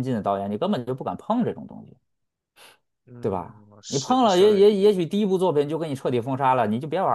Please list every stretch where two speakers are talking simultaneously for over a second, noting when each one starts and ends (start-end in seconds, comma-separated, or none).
3.2-4.7